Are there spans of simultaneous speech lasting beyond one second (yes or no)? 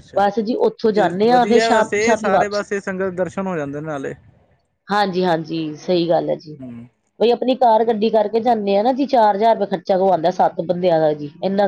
yes